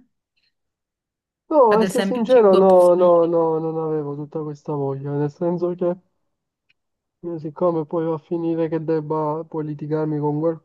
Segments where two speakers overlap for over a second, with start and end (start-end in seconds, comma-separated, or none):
1.7-3.3